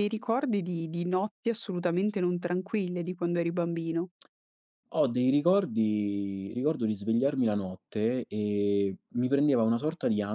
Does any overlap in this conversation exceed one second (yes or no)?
no